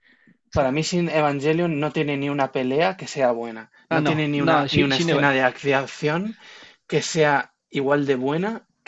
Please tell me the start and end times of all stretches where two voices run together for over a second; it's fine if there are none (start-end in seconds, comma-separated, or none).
3.9-5.3